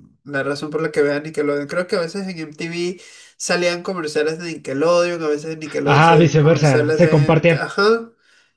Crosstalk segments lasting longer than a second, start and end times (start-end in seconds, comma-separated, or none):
5.8-7.6